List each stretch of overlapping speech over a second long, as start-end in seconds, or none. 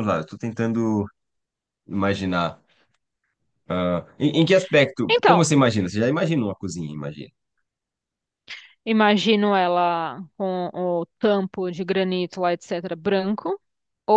none